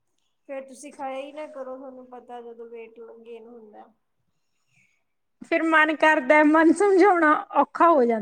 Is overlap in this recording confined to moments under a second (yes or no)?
yes